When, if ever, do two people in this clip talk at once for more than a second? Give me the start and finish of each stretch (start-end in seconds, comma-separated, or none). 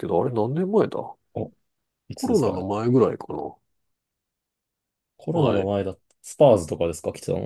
none